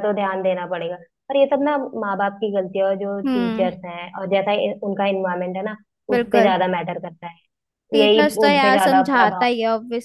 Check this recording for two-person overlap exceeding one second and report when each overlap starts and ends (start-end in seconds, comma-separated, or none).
8.0-9.5